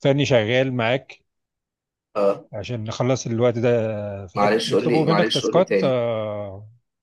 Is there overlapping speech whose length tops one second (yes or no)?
yes